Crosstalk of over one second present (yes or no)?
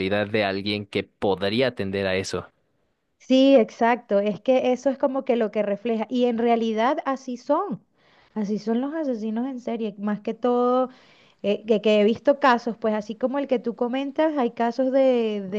no